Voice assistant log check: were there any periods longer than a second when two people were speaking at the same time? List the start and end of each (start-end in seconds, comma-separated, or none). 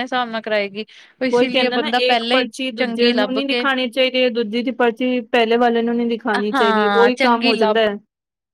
1.3-3.6